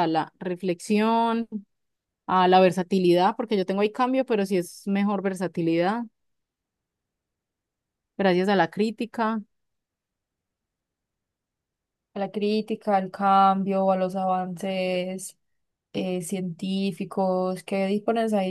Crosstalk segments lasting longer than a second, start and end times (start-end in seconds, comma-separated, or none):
none